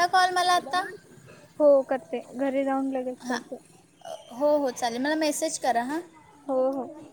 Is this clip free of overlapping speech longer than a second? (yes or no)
yes